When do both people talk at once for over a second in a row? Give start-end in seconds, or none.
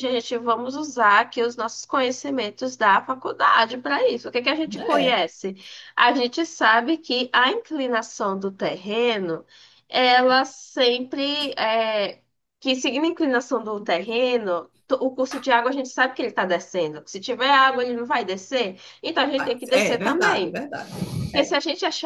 19.3-20.6